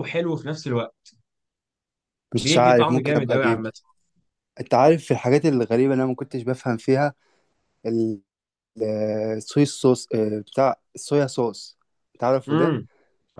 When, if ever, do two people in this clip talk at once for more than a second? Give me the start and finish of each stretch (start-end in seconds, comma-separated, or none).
2.4-3.7